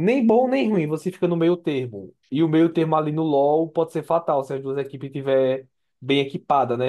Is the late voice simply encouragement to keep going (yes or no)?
no